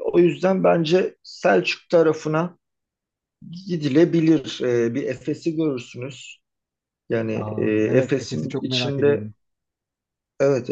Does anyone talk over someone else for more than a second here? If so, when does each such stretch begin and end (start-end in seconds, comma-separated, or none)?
7.3-9.3